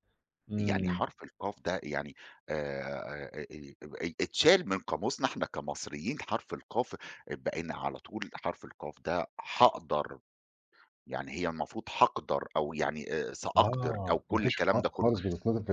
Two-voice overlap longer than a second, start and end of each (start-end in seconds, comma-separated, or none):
13.6-15.1